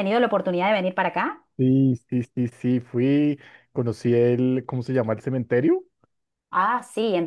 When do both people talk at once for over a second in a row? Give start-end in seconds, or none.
none